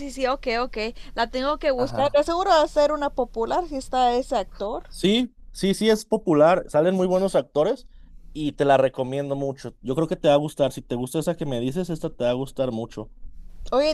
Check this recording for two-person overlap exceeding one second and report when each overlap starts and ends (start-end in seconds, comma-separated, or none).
none